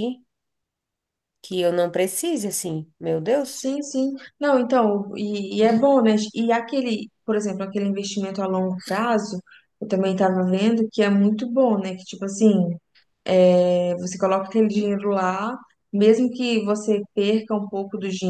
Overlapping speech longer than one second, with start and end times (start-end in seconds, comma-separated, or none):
none